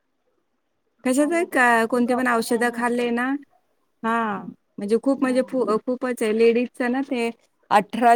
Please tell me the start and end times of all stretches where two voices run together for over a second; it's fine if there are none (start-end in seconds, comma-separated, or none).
1.2-3.1